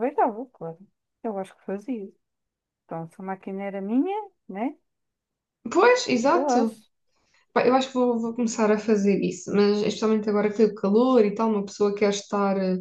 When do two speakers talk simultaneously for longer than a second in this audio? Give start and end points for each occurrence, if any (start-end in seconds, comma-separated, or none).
none